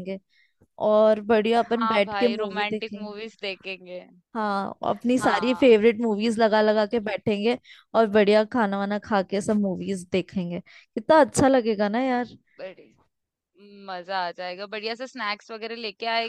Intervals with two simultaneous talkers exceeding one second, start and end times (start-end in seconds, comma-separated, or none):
1.6-3.1